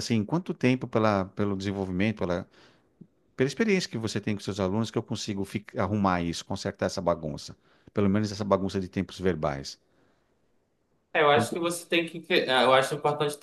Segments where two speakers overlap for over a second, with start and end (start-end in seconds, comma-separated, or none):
none